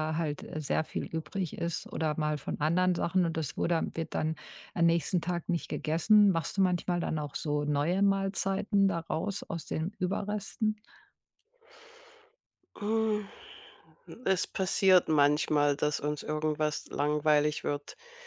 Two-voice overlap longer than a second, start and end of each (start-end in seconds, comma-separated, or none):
none